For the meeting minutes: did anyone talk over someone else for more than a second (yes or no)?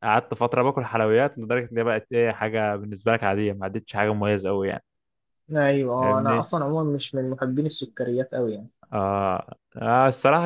no